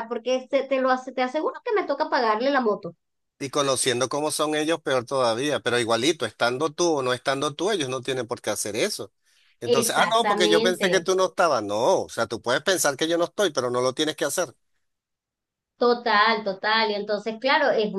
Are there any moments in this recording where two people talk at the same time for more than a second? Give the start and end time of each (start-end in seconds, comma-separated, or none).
9.7-11.1